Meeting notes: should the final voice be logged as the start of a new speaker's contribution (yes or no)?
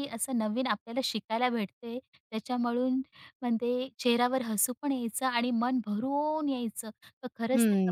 yes